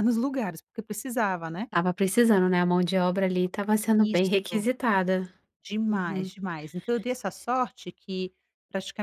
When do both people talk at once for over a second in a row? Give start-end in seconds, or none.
none